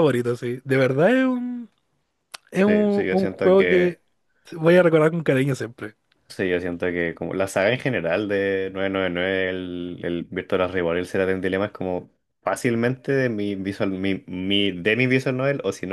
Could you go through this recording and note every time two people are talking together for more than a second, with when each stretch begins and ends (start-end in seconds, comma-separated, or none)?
2.6-4.0